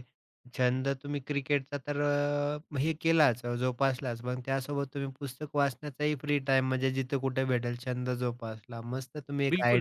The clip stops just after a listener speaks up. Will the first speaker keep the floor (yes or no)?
no